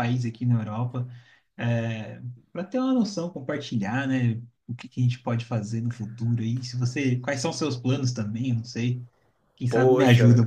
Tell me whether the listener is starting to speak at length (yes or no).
yes